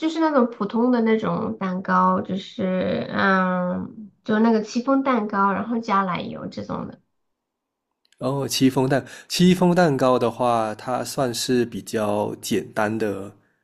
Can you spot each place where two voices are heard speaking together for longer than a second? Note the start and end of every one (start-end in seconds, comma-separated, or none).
none